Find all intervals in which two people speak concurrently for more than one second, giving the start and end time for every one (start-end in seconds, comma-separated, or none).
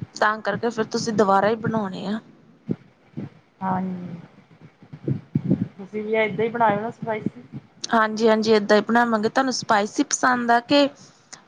none